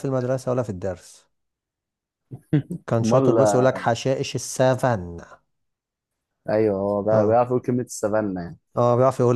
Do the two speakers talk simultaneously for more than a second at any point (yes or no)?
no